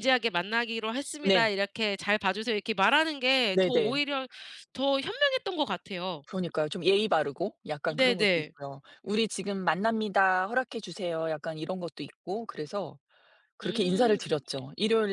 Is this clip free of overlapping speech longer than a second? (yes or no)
yes